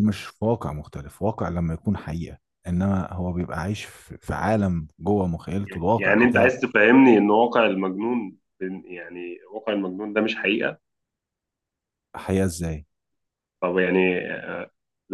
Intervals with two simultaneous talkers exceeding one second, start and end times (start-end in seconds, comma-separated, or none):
none